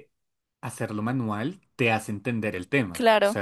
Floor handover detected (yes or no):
no